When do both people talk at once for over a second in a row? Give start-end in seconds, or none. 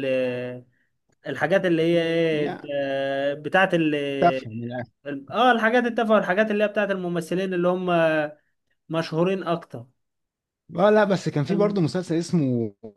none